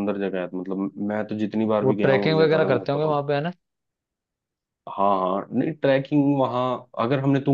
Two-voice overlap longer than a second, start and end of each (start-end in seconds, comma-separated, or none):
1.8-3.2